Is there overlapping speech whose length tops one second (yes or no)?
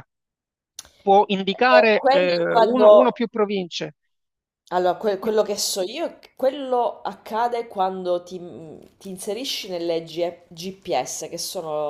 yes